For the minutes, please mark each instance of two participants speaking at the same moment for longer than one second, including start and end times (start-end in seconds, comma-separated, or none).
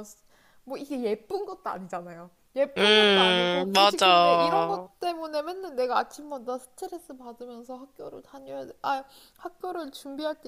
2.8-4.9